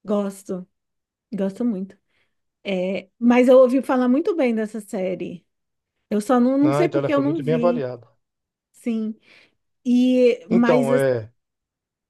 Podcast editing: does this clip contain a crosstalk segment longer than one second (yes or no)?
yes